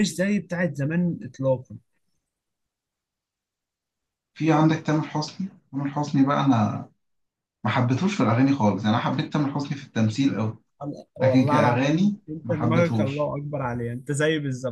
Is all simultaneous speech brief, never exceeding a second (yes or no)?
no